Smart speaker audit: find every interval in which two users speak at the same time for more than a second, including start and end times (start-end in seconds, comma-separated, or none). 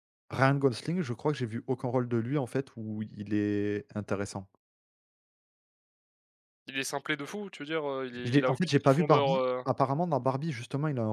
8.2-9.7